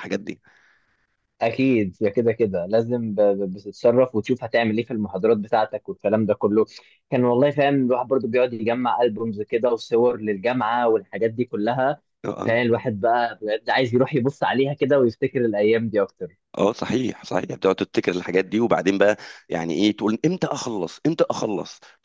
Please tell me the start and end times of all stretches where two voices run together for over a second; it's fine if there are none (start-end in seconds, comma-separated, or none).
none